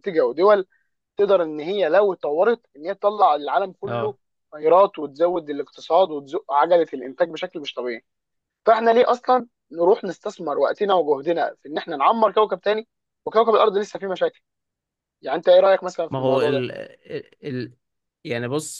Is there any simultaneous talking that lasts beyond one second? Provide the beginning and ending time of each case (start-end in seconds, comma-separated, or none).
none